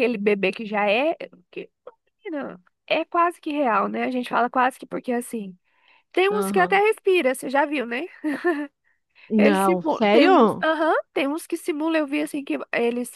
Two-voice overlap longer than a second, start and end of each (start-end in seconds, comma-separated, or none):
9.4-10.6